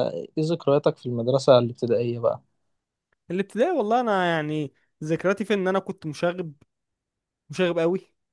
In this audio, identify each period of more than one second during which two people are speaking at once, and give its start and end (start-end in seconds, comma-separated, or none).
none